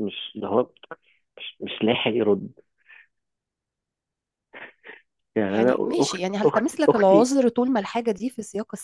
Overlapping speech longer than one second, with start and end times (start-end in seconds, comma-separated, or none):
5.5-7.3